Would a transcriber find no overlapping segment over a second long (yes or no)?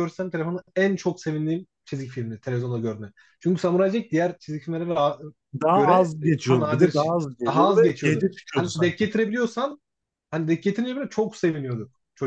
no